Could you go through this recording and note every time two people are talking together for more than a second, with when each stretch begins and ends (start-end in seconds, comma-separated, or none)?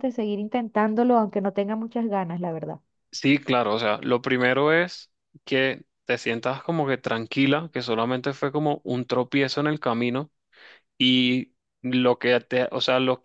none